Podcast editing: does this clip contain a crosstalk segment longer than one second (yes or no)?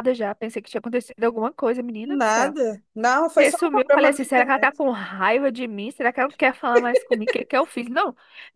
yes